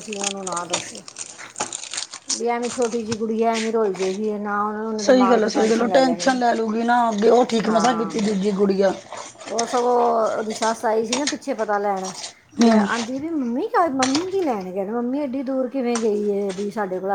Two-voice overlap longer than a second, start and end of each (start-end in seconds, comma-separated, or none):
5.0-6.4